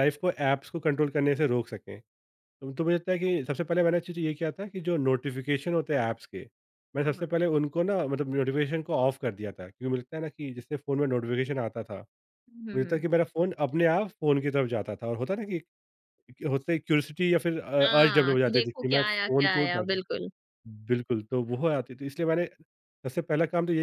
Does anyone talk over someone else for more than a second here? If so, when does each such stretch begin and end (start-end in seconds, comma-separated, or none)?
17.8-20.0